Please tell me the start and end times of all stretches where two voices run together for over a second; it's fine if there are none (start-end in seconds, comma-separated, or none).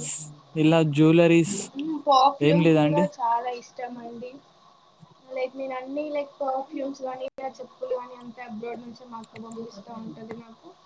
none